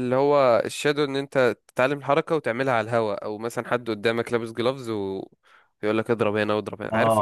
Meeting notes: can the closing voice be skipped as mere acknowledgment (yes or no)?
yes